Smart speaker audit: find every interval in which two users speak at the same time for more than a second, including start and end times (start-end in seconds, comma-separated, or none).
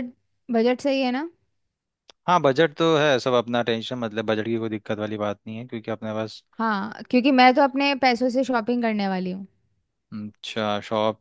none